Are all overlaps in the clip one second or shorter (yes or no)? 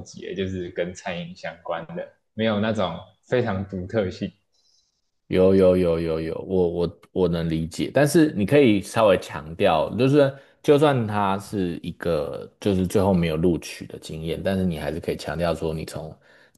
yes